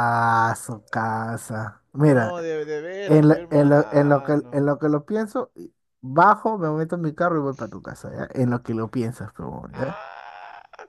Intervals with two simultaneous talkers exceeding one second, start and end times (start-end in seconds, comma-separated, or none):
3.0-4.7